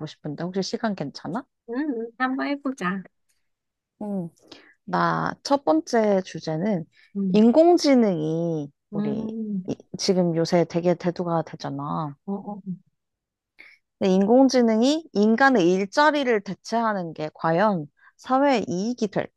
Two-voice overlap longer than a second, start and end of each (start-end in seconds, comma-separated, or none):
none